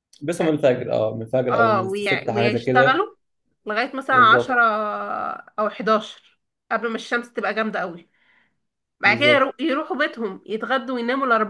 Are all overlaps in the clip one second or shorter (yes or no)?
no